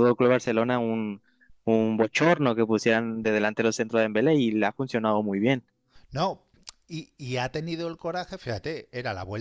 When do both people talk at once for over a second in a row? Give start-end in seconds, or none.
none